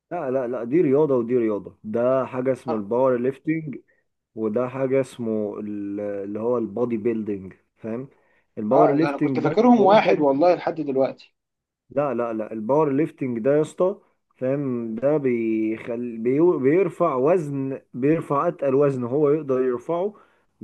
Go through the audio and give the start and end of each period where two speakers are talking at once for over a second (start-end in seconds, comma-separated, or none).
8.7-10.3